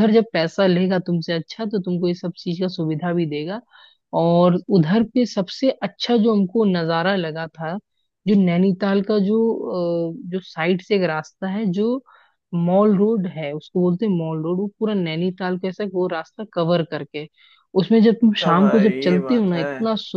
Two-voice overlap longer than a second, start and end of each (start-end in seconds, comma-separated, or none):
18.1-19.6